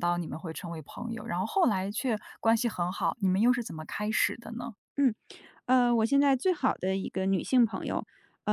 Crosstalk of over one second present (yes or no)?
no